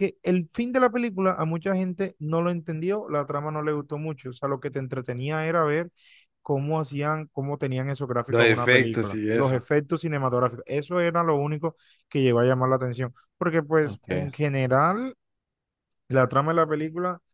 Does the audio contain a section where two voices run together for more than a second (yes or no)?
yes